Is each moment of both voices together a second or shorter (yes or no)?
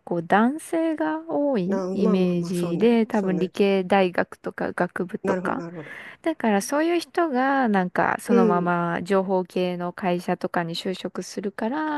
no